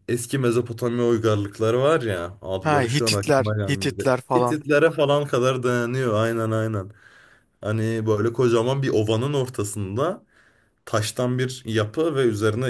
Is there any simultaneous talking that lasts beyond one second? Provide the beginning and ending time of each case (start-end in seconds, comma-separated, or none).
2.6-4.6